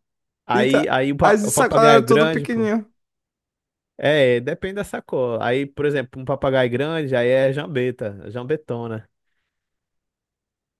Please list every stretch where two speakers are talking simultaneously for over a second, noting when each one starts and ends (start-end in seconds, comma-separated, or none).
0.5-2.7